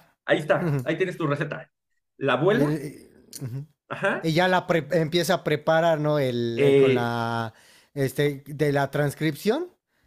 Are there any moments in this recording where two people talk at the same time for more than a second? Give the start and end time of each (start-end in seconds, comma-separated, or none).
none